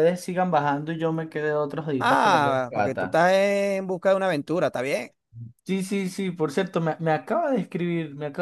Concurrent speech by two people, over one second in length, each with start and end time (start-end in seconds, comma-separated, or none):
2.0-3.2